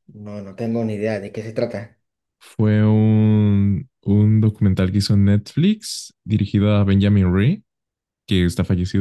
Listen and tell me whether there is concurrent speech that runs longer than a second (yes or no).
no